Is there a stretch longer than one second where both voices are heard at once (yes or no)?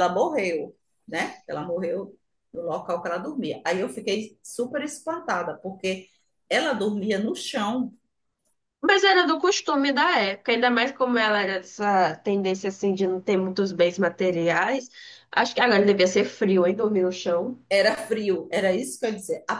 no